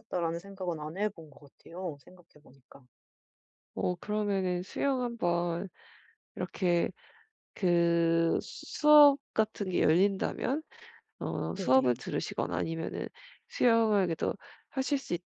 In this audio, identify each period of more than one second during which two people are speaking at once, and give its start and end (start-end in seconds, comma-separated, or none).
none